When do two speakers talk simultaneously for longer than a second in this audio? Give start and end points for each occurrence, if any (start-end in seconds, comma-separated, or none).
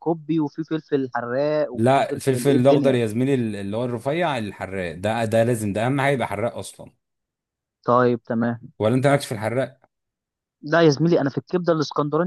1.7-3.0